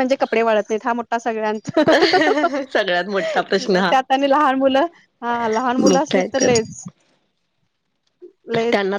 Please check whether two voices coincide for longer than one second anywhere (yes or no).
no